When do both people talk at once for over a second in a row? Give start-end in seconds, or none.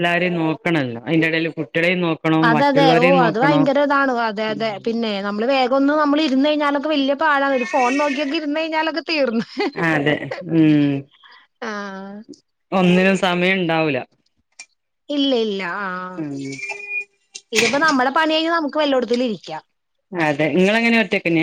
none